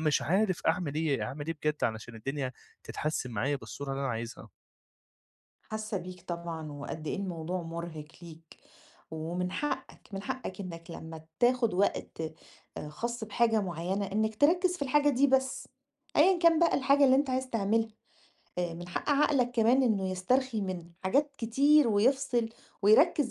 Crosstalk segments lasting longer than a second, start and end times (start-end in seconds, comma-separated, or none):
none